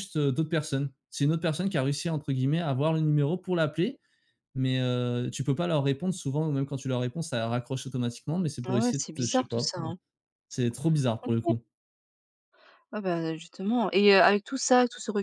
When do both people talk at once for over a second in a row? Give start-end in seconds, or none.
8.7-9.9